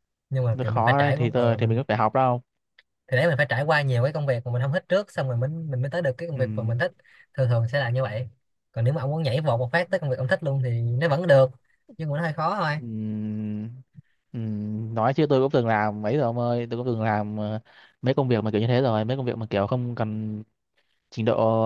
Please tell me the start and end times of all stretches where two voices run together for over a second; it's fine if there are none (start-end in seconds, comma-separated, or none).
0.5-1.8